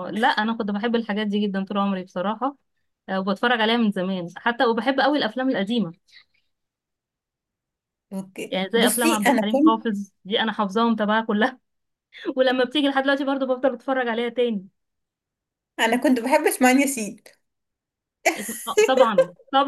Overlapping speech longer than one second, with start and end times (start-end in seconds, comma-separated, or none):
8.5-9.8